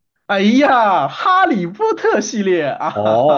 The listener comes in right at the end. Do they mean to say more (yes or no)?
yes